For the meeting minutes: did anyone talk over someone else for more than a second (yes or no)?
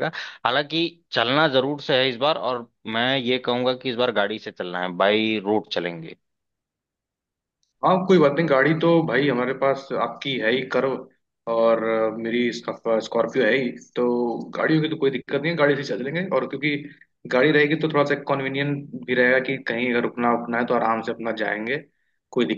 no